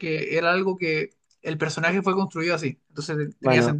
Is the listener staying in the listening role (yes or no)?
no